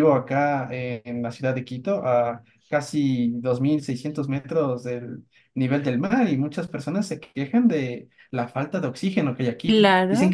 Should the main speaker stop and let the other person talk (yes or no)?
no